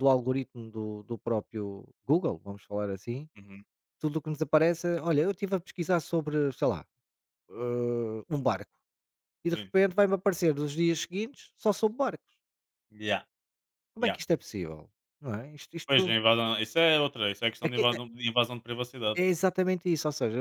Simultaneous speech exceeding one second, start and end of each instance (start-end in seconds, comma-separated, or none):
none